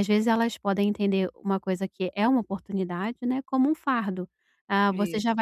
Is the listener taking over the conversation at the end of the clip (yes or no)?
no